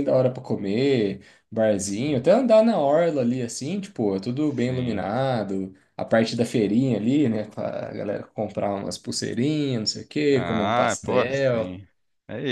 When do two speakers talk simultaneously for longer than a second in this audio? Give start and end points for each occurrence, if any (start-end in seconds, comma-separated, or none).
10.3-11.8